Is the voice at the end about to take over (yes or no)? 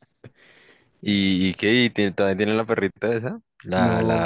yes